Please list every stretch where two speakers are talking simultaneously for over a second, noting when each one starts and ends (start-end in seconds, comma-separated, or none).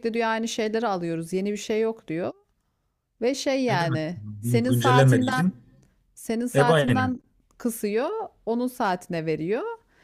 3.7-5.4